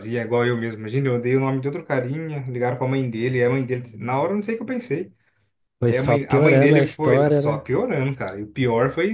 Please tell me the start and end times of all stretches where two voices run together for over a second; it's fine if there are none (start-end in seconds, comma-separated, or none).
5.9-7.6